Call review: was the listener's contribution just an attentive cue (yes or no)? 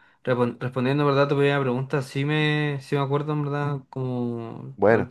yes